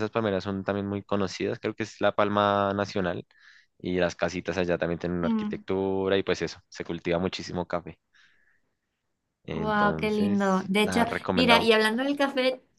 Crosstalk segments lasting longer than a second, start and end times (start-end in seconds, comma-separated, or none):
9.5-11.7